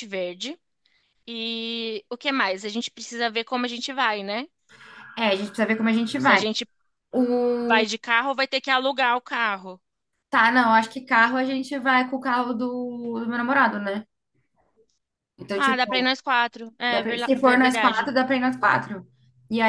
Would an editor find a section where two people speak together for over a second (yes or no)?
yes